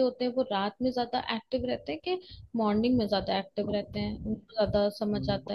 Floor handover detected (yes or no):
yes